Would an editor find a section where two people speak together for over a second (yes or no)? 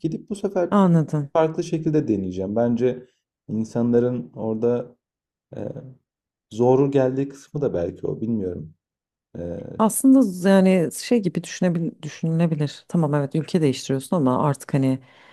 no